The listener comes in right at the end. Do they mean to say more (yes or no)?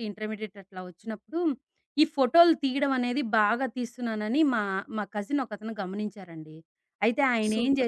yes